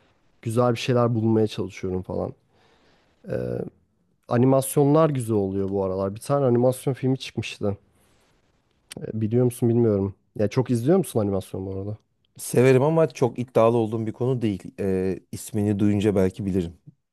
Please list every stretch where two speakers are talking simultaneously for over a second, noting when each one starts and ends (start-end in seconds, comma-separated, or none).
none